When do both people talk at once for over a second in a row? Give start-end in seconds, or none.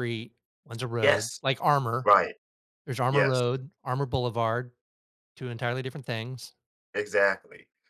none